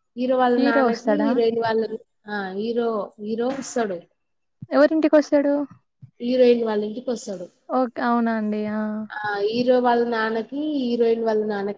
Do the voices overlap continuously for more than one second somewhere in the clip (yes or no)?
no